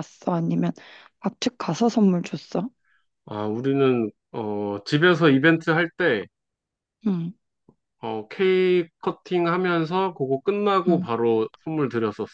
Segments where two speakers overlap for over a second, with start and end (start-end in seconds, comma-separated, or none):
none